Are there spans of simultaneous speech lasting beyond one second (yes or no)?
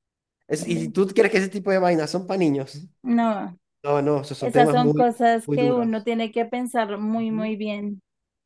yes